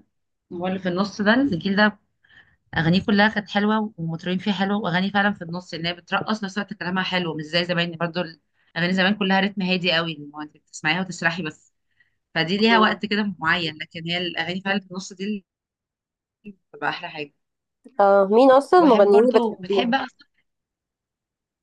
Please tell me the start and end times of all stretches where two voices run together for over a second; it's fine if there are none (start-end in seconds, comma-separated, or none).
18.7-20.0